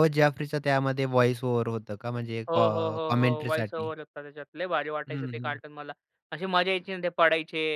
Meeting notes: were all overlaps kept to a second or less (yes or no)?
no